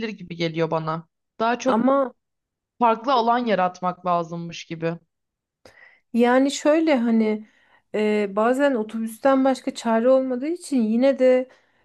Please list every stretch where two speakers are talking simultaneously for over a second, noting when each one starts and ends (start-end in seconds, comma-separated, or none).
none